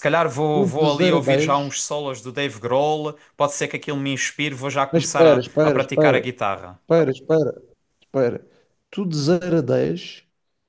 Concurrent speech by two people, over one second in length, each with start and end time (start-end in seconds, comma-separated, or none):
0.5-1.8, 4.9-6.4